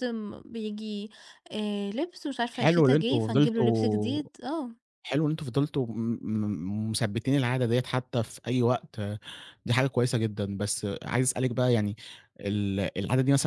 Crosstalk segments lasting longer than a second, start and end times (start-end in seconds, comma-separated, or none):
2.5-4.2